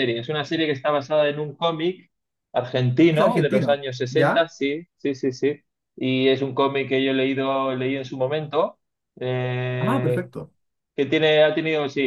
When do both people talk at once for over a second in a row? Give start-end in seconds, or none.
3.1-4.5